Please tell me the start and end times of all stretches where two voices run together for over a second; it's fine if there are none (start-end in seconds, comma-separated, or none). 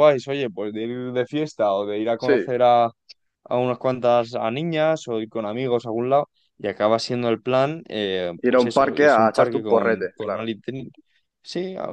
8.5-10.5